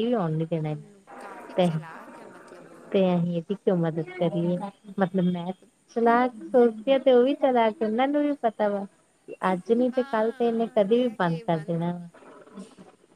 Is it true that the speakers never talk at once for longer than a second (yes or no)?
no